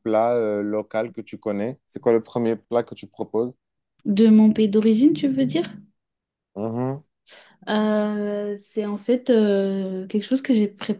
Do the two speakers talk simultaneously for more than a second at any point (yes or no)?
no